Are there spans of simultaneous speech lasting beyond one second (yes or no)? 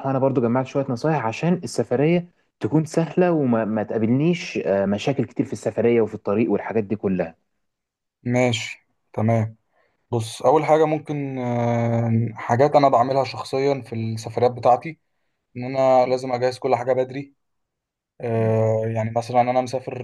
no